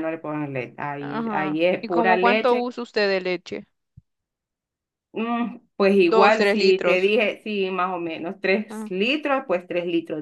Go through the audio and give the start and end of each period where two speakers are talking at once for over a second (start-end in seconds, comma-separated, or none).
1.0-2.6, 6.0-7.2